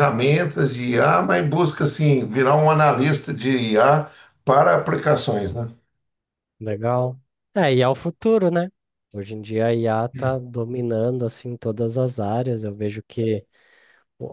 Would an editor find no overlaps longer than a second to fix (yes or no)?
yes